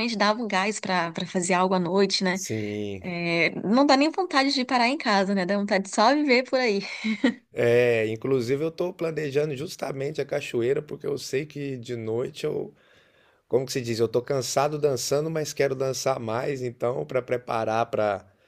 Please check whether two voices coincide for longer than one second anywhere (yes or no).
no